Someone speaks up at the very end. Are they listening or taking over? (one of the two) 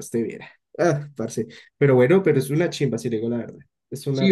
taking over